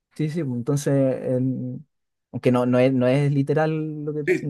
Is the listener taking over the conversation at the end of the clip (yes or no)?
yes